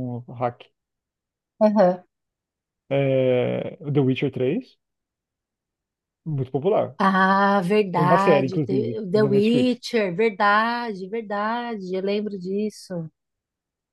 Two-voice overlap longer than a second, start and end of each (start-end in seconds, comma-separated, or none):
7.9-9.8